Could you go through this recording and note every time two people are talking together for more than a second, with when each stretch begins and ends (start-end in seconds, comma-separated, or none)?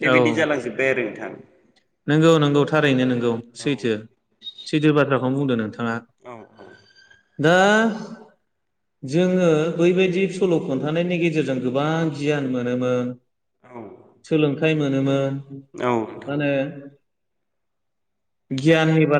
none